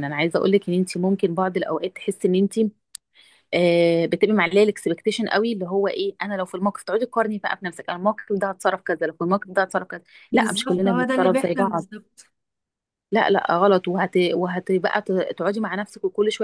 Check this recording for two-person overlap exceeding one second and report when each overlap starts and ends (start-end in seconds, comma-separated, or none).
10.3-11.8